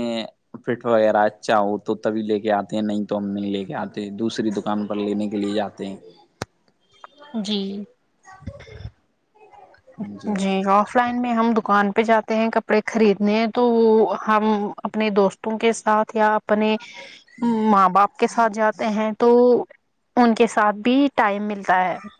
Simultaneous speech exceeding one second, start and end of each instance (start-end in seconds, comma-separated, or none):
none